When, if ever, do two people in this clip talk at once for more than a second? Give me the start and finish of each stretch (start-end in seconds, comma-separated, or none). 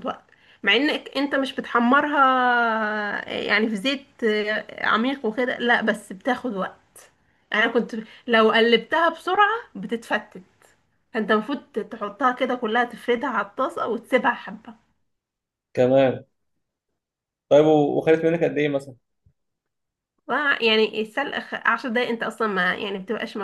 none